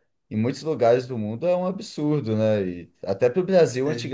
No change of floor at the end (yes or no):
yes